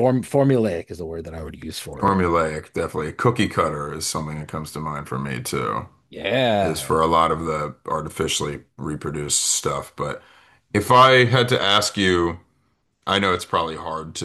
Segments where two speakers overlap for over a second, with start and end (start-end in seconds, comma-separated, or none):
none